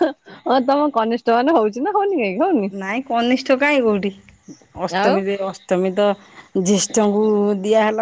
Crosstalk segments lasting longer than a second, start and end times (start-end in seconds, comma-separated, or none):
none